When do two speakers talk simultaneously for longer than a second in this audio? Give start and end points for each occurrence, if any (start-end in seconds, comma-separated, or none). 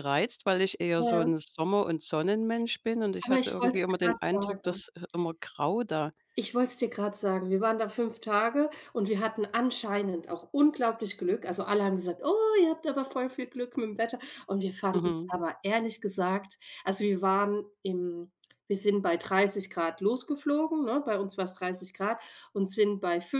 3.2-4.8